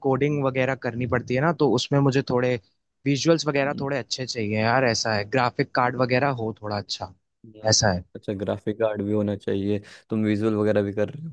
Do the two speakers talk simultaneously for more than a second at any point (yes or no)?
no